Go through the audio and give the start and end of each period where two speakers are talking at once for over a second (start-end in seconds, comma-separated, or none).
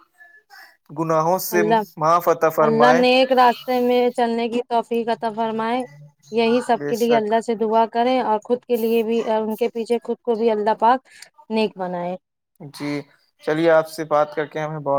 none